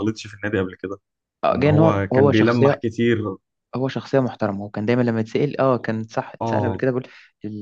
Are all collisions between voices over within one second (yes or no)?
no